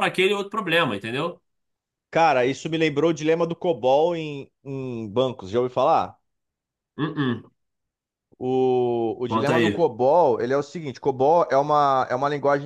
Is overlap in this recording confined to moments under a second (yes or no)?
yes